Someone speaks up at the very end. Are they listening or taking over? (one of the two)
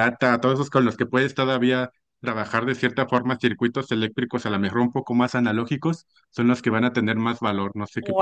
taking over